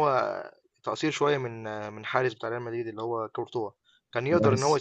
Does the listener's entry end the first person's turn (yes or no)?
no